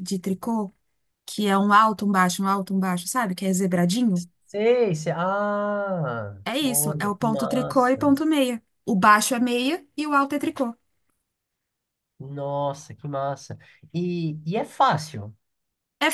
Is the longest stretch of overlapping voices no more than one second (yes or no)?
no